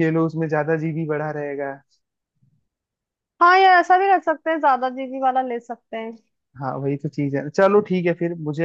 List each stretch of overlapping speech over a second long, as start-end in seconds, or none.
none